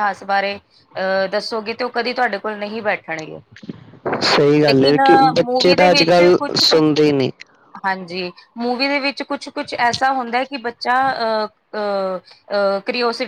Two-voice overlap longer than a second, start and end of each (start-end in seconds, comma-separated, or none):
4.7-6.9